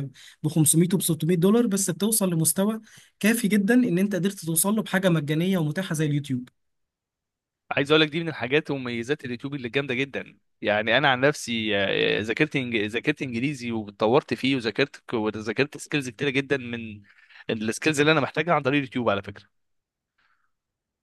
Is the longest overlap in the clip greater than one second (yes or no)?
no